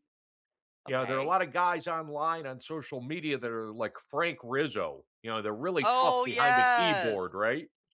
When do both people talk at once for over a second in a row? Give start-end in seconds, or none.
5.8-7.3